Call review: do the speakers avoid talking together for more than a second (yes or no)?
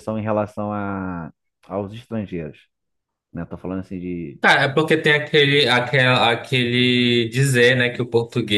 yes